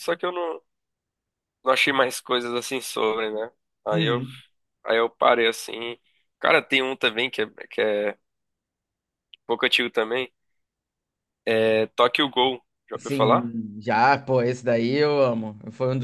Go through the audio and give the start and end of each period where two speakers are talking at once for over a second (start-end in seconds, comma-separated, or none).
none